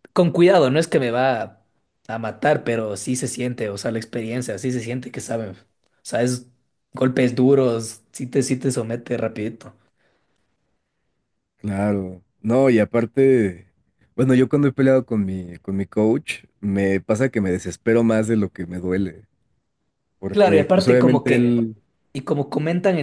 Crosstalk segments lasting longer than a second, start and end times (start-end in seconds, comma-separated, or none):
20.3-21.5